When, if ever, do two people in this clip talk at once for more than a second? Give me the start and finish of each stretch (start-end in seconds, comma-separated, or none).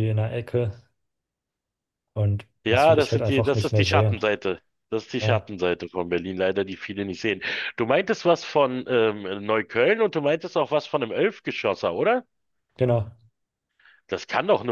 2.6-4.2